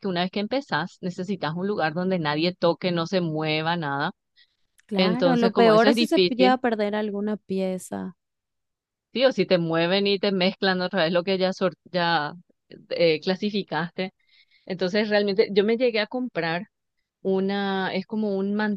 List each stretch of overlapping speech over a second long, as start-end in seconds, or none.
5.0-6.6